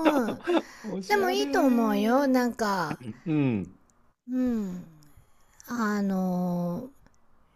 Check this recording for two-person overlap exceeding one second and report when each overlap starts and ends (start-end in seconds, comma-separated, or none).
1.1-2.5